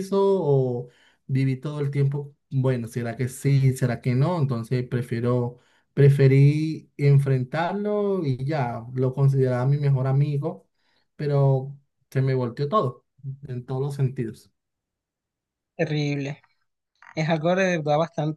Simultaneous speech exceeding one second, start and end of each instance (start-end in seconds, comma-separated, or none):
none